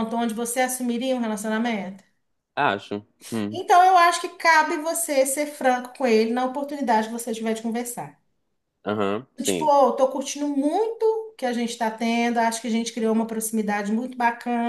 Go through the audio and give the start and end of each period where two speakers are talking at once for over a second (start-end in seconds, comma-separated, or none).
none